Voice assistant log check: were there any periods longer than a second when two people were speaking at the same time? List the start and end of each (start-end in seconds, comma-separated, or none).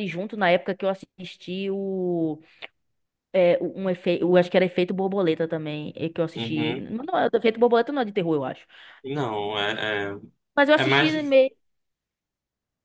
none